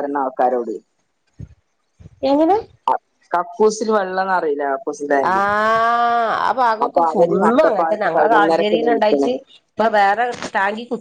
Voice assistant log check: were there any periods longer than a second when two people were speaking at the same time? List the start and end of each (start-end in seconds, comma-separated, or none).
6.8-9.3